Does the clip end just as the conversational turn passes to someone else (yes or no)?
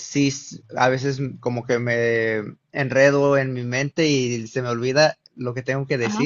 no